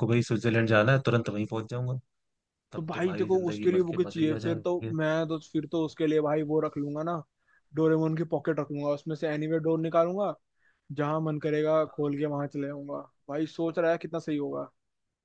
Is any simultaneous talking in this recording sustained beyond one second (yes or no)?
yes